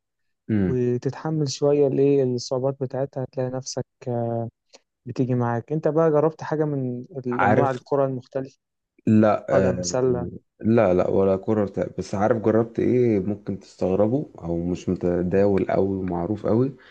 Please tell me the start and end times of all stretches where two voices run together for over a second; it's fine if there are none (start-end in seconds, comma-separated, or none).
none